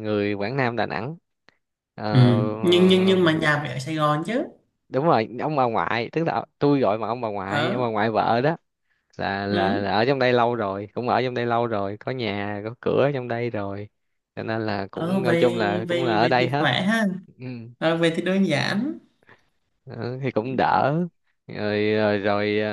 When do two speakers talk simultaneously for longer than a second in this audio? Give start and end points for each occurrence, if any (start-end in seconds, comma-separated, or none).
14.9-16.7